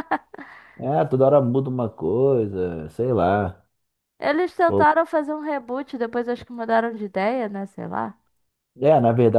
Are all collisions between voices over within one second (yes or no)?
yes